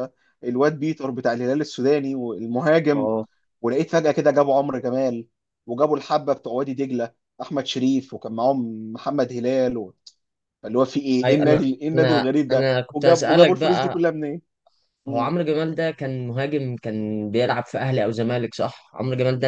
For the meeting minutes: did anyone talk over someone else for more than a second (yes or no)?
yes